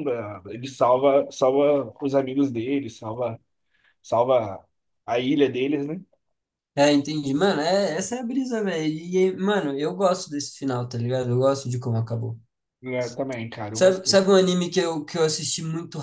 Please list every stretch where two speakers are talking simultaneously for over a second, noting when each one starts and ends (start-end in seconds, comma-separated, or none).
none